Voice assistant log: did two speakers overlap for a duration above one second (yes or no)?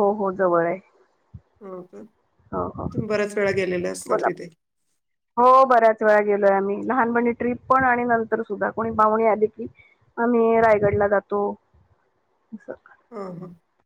no